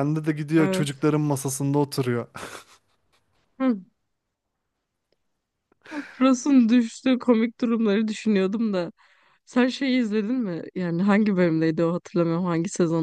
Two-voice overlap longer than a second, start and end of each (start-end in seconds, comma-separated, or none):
none